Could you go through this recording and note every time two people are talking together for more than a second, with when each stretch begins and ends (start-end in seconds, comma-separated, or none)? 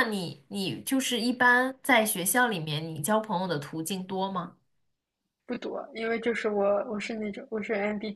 none